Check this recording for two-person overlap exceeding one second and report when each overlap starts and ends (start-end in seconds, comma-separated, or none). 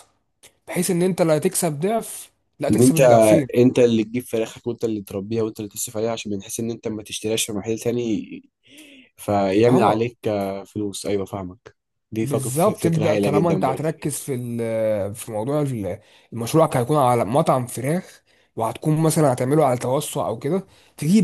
12.2-13.9